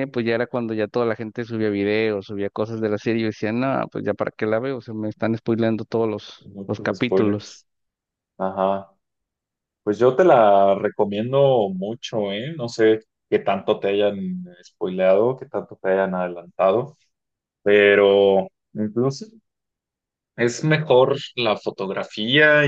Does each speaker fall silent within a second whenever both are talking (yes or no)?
no